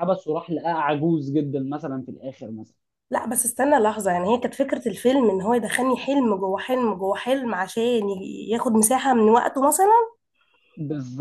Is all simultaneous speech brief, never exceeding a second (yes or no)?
yes